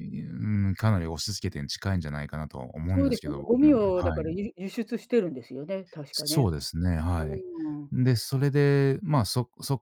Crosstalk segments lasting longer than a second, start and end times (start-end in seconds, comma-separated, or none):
2.9-4.3